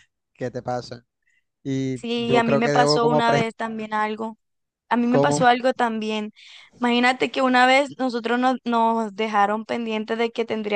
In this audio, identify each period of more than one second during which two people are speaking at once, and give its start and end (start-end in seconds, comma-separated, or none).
1.9-3.4